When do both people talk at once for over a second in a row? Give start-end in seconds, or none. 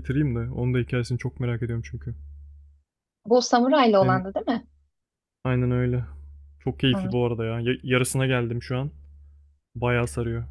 none